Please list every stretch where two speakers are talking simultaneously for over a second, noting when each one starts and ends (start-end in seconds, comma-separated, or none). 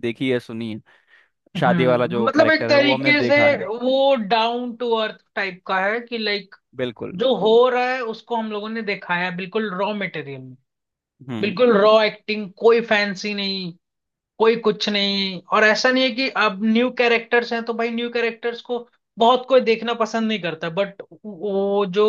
1.6-3.6